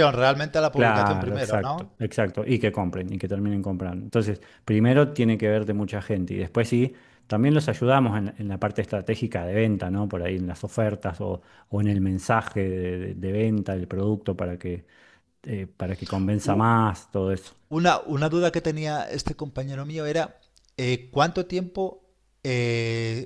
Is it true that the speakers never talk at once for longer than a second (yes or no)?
no